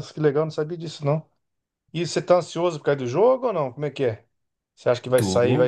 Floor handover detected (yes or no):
no